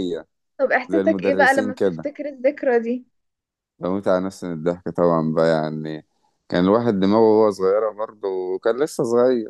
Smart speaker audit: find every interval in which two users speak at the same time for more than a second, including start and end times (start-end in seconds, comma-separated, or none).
0.8-2.1